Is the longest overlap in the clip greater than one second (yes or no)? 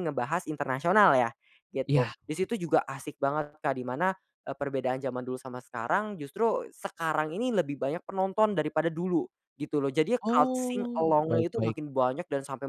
yes